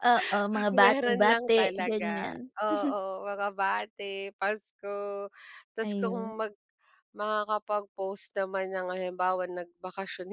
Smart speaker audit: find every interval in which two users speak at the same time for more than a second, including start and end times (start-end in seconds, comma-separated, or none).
0.5-2.4